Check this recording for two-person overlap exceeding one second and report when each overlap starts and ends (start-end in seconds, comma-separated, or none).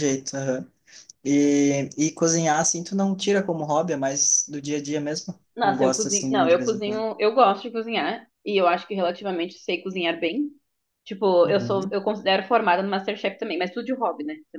5.5-7.0